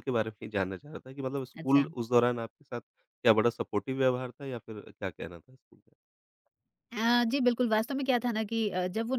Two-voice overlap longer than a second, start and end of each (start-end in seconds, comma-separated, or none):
none